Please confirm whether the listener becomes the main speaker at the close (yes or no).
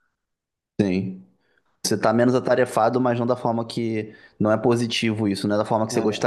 no